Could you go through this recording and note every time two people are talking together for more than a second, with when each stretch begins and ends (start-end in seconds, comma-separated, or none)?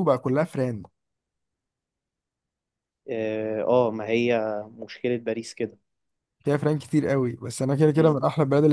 none